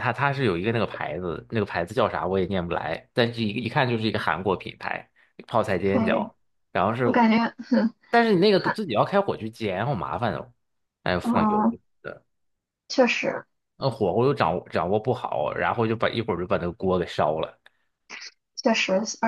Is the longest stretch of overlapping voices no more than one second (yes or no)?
yes